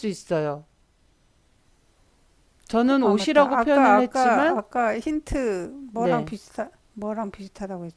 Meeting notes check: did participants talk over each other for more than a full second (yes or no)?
yes